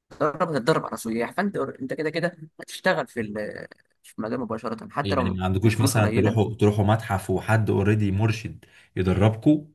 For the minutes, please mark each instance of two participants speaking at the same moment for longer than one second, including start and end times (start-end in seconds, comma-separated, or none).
5.0-6.5